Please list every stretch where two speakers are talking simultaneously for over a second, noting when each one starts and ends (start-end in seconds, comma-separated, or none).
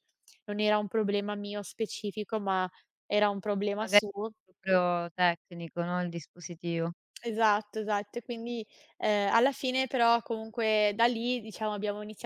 none